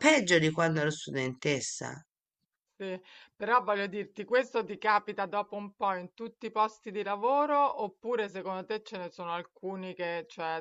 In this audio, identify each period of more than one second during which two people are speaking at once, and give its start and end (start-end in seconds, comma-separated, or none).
none